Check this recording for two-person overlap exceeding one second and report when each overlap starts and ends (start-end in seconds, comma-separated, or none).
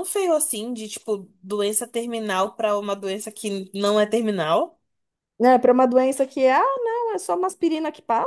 none